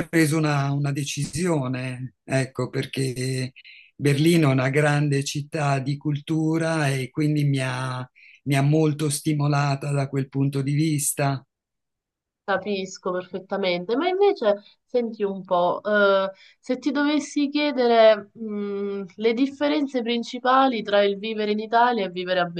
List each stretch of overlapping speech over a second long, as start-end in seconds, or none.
none